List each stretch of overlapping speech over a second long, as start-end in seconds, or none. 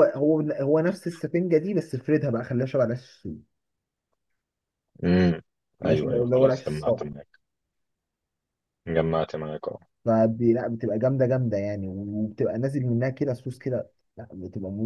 5.8-7.1